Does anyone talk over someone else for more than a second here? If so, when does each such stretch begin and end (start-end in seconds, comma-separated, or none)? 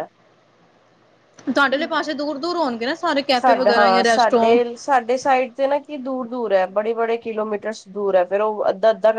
3.3-4.6